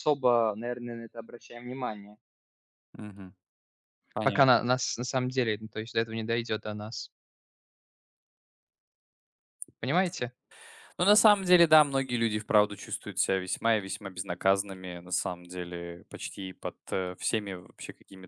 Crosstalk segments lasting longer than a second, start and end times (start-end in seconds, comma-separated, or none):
none